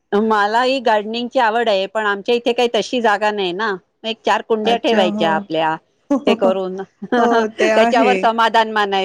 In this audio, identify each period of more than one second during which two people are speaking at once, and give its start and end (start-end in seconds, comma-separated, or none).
6.3-8.2